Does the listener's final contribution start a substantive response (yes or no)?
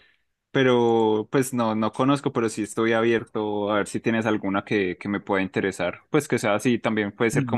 no